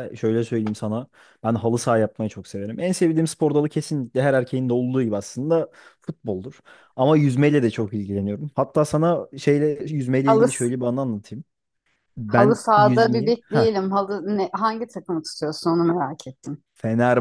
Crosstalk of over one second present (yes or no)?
yes